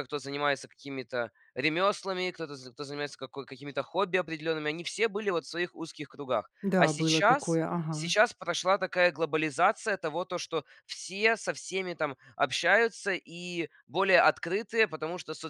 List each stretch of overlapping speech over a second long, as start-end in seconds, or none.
6.6-8.1